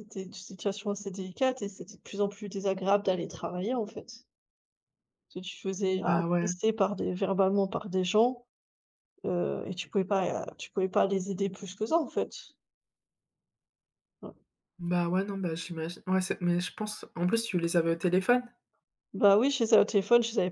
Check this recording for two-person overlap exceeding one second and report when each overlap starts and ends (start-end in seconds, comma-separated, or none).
none